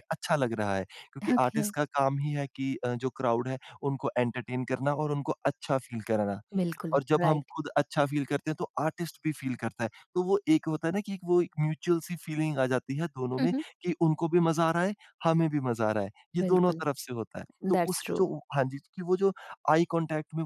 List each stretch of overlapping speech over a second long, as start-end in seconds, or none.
none